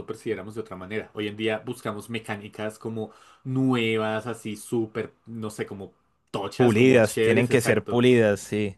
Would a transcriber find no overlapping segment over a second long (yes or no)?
no